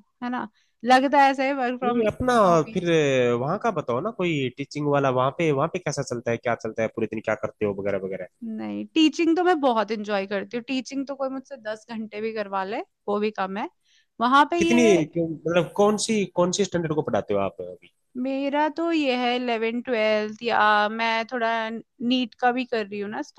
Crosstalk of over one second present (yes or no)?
no